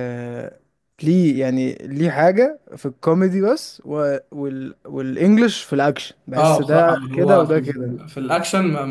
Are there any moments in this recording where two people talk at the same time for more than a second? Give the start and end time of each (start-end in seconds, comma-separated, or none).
6.4-8.0